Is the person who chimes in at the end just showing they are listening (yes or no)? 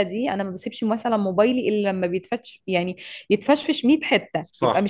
no